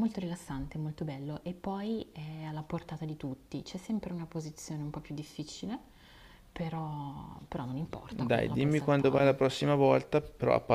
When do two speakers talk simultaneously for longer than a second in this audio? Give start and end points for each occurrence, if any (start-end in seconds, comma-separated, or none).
8.1-9.4